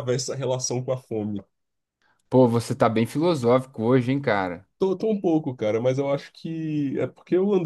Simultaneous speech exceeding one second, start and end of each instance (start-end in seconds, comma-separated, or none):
none